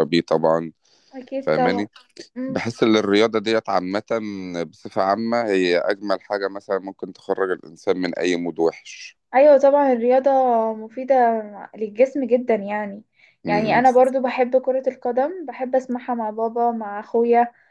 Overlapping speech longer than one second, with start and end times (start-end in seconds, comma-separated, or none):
none